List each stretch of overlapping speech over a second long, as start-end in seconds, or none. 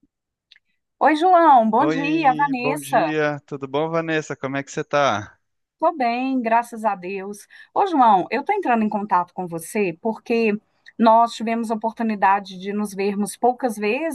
1.8-3.1